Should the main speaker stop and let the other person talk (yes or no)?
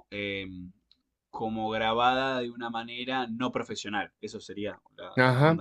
yes